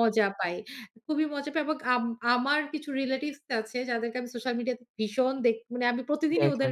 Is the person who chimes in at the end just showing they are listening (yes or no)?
yes